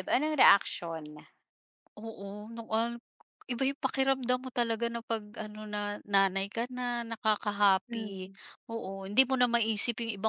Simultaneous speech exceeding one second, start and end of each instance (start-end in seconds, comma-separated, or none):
none